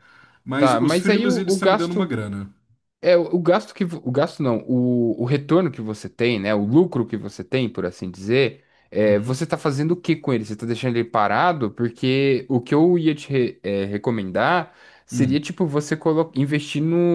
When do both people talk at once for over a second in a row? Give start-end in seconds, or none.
0.6-2.1